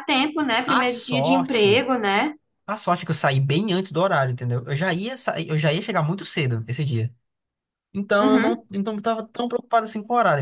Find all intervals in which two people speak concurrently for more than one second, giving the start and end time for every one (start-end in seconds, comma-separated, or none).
0.7-1.9